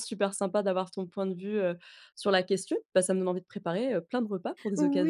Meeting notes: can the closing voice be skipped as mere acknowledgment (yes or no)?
no